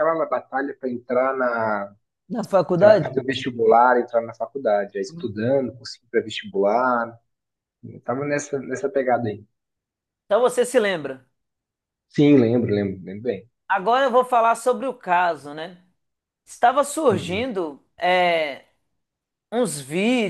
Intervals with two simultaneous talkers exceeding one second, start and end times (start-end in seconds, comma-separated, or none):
none